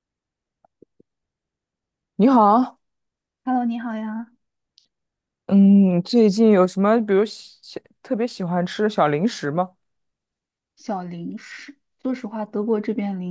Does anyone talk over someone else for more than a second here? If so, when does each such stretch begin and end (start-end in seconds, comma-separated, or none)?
none